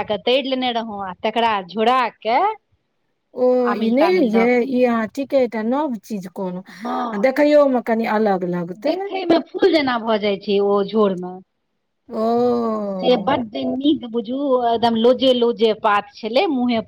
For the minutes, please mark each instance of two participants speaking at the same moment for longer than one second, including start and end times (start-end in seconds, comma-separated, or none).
none